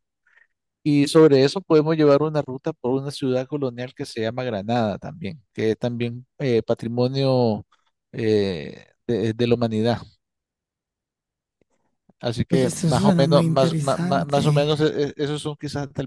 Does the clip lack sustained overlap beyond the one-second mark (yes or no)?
no